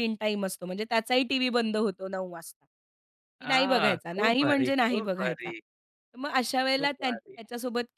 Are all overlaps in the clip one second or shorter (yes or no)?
no